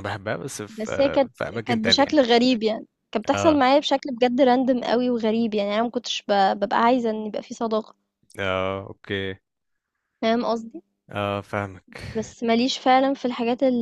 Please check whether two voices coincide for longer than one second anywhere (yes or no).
yes